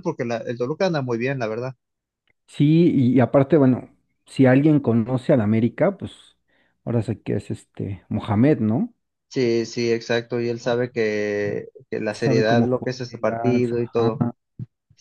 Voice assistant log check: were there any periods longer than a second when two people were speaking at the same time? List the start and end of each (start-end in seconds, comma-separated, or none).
12.1-14.2